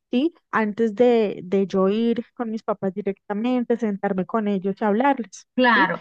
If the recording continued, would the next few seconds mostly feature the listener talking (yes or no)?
yes